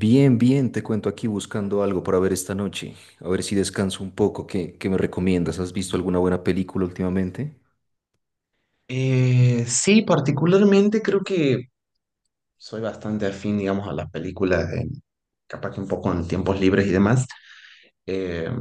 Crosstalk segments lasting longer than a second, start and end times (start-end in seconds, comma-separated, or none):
none